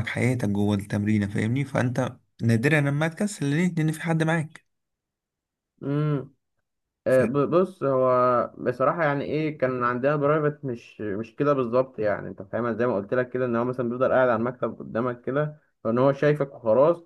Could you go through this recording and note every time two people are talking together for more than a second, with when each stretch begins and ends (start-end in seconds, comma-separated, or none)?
none